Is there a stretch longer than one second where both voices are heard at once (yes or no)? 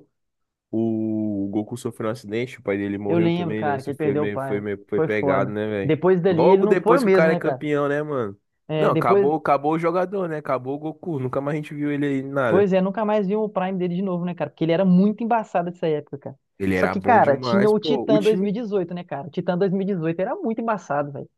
yes